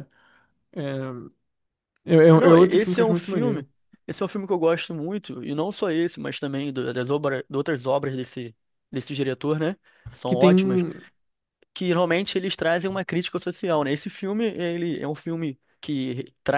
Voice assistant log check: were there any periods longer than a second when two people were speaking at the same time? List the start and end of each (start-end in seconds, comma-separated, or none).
2.3-3.6